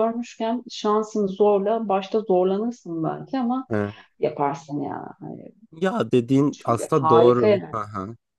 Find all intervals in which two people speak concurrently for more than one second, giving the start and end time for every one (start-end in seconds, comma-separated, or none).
6.5-7.8